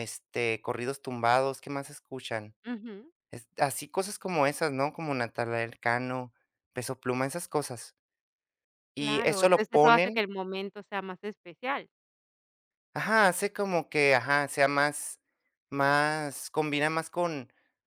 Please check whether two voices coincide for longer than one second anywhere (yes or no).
yes